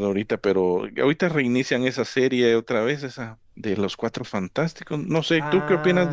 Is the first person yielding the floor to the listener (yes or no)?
yes